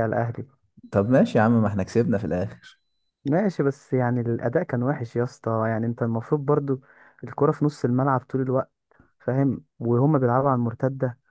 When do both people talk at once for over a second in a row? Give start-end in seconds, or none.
none